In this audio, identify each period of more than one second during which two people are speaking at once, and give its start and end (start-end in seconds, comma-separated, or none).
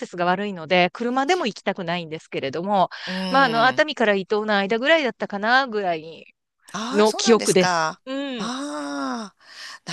6.9-8.5